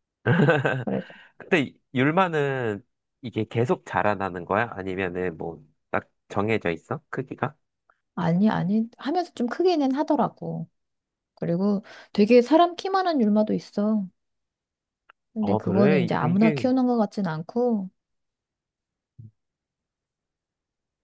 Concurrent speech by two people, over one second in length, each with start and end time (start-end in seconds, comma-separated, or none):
15.4-16.6